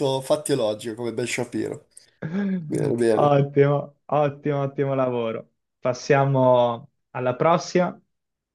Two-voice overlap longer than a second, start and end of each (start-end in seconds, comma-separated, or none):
none